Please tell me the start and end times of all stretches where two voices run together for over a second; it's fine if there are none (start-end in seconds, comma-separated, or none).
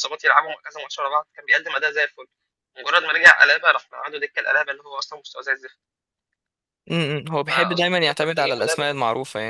7.5-8.9